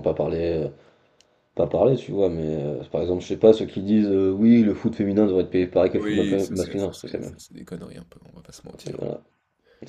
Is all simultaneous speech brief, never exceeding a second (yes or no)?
no